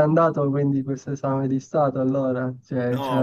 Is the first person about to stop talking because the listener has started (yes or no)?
yes